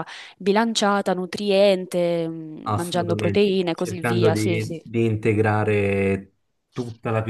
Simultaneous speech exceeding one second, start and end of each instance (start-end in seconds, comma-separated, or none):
2.6-4.8